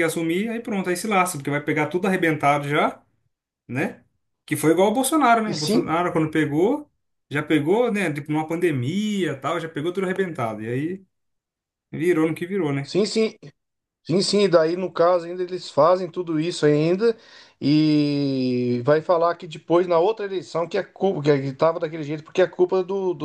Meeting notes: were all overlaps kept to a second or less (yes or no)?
yes